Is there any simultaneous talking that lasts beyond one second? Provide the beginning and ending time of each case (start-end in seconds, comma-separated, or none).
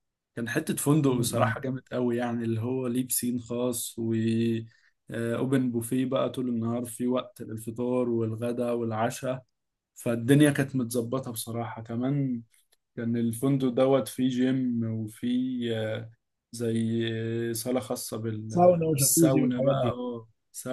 18.5-20.0